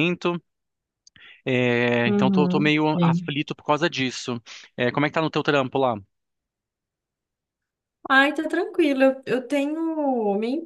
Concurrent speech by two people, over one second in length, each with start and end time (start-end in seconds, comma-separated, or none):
2.0-3.3